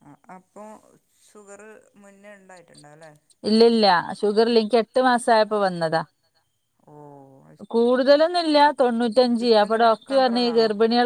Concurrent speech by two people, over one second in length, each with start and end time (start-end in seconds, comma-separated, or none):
none